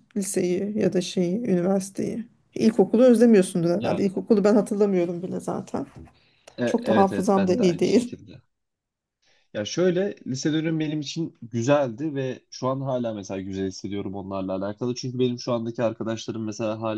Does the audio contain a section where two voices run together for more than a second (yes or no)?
yes